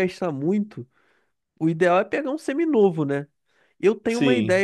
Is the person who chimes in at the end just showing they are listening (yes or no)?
yes